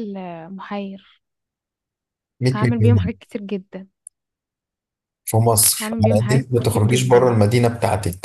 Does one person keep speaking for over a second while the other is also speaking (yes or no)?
yes